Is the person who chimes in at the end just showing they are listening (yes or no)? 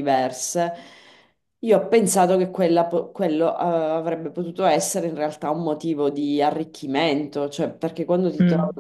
yes